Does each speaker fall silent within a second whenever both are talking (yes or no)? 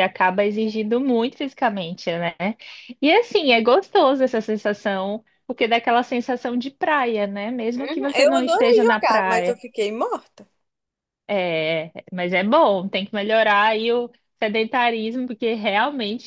no